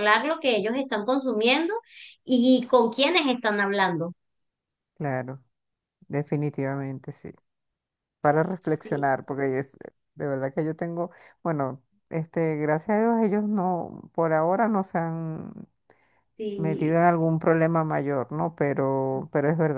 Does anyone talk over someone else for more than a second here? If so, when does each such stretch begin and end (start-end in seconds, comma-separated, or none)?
none